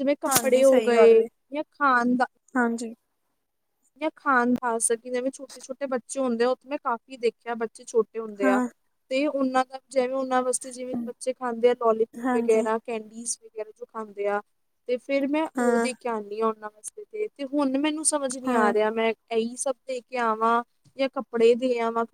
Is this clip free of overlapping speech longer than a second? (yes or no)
yes